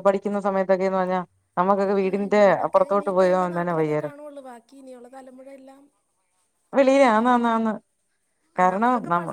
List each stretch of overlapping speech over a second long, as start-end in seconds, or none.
2.1-4.2